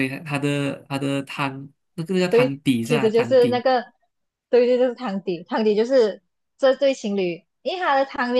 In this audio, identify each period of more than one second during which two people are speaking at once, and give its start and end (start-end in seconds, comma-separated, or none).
2.3-3.6